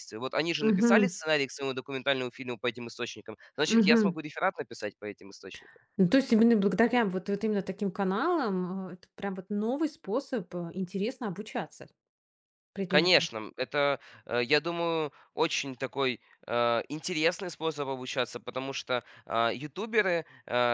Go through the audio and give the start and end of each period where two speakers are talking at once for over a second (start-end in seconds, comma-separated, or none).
none